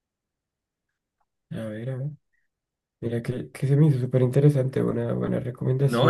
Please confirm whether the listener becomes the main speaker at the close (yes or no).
yes